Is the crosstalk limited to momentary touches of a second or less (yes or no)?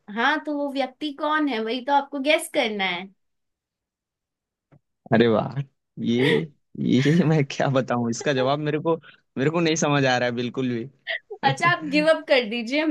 yes